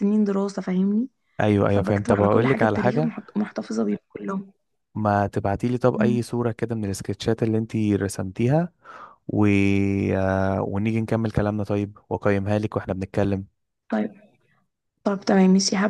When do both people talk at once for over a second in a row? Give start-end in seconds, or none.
1.7-3.1